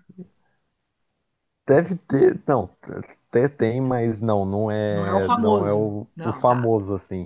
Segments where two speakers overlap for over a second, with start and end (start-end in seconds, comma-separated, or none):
4.9-6.7